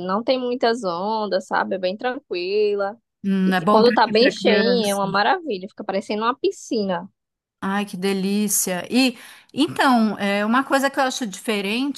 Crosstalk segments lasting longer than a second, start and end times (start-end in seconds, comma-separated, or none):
3.5-5.0